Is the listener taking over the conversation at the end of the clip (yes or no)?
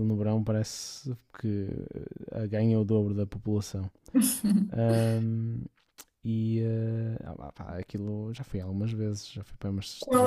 yes